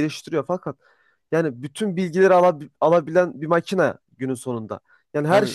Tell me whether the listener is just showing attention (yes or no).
yes